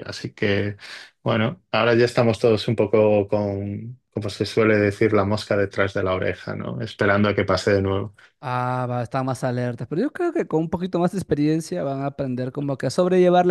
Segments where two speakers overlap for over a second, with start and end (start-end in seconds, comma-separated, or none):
none